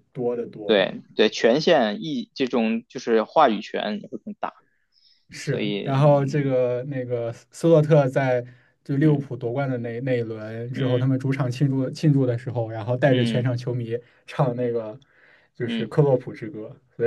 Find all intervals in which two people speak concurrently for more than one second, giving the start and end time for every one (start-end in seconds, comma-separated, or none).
none